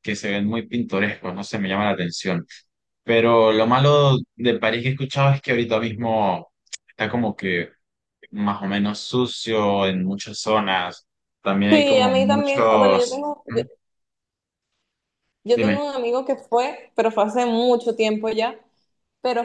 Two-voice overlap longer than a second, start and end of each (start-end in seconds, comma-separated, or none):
11.7-13.6